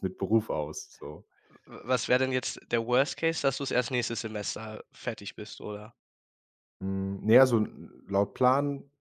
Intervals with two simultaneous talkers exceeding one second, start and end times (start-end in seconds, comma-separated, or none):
none